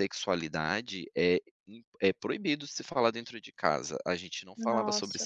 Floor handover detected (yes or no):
no